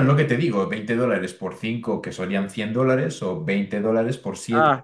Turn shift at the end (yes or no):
no